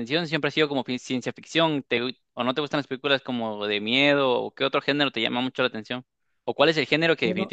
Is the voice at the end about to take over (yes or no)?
no